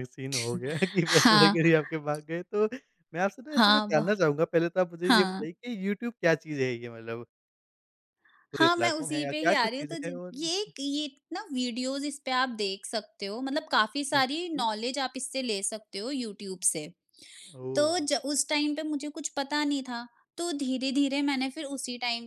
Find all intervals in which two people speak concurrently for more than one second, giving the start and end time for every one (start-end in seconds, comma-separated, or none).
8.6-10.3